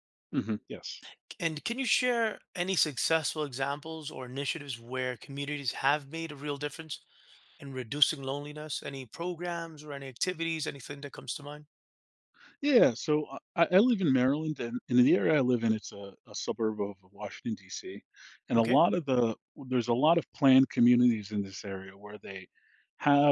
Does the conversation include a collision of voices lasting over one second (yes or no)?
no